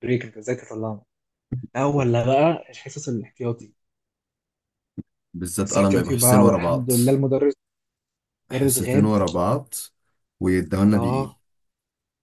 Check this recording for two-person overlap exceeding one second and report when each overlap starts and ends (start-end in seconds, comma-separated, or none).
5.6-6.9